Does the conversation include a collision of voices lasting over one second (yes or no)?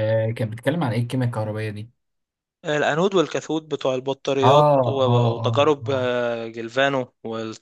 yes